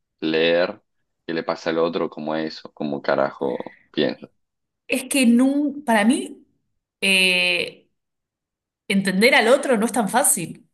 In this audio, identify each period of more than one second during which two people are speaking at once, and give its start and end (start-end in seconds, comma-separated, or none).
none